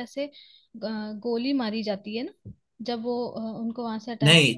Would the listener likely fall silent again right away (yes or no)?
no